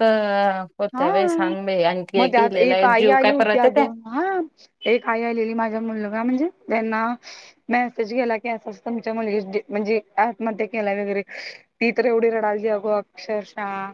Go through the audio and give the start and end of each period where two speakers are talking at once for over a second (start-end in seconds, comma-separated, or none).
2.2-3.9